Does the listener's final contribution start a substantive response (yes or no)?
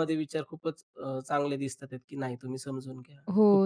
yes